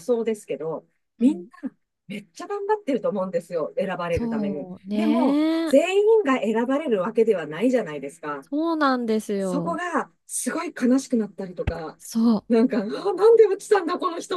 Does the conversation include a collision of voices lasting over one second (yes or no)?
yes